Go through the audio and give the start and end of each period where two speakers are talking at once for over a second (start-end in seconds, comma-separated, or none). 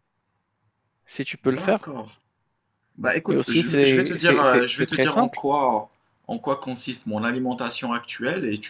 3.3-5.4